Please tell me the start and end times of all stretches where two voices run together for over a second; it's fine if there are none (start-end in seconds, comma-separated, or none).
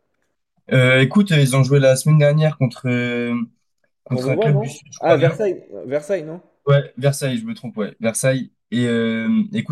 4.1-5.4